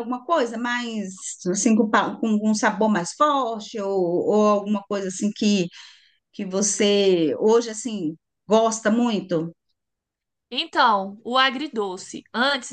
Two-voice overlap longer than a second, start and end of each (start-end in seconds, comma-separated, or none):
none